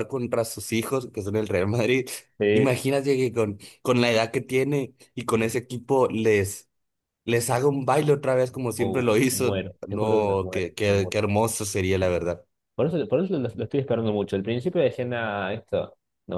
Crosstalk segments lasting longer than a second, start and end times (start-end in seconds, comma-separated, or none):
8.8-11.2